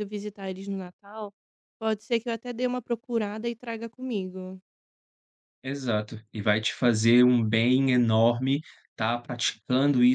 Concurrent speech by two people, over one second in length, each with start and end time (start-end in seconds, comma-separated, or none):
none